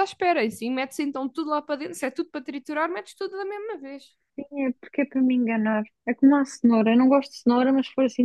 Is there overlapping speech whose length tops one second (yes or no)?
no